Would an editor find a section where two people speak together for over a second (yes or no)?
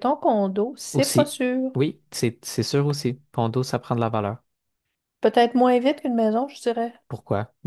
no